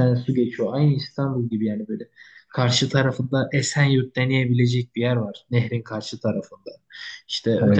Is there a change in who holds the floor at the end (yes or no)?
no